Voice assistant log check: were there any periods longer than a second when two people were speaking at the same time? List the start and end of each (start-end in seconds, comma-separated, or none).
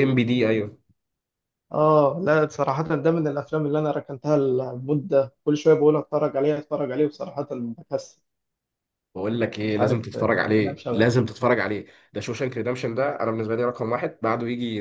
9.7-11.1